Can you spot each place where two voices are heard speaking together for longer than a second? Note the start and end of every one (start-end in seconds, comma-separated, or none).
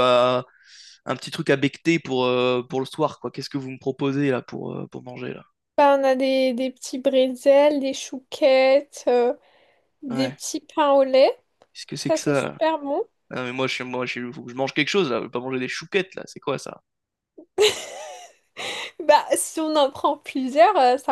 none